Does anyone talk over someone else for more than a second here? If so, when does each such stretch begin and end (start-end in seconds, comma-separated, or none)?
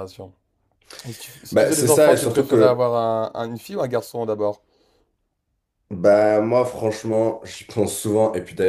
1.5-2.8